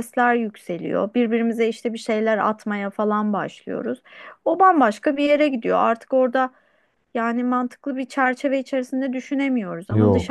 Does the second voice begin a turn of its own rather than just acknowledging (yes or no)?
no